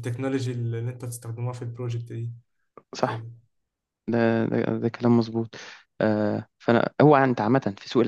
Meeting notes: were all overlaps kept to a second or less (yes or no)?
yes